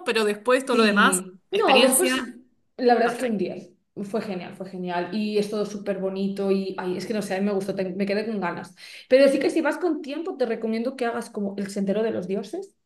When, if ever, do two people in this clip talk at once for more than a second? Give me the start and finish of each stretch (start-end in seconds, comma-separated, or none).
0.7-2.2